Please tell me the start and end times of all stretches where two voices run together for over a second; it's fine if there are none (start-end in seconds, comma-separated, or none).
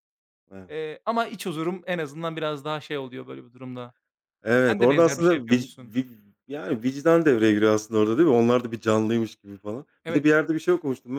4.7-6.0